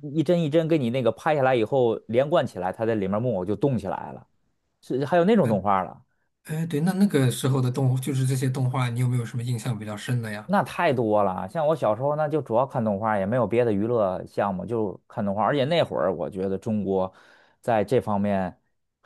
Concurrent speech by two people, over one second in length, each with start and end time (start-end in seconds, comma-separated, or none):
none